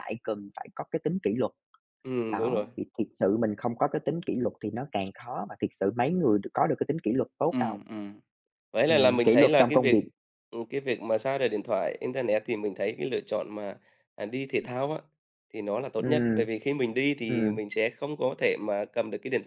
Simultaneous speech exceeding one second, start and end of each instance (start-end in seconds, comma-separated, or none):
8.9-10.1